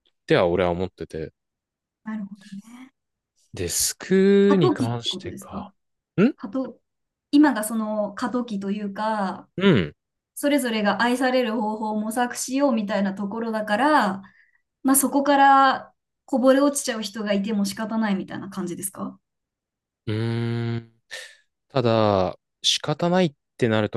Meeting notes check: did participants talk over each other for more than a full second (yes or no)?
yes